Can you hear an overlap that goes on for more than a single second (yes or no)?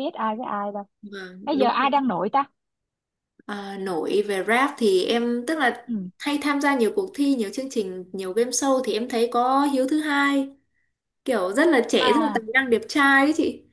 no